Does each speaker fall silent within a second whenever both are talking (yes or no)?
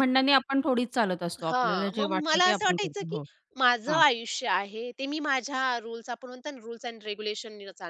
no